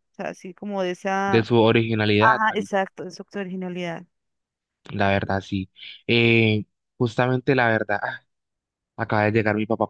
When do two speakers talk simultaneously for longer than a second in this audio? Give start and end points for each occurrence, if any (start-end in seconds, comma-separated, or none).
none